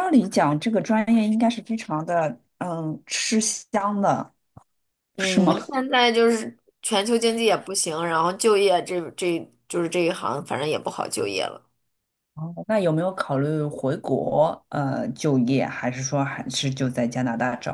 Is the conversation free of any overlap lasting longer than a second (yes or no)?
yes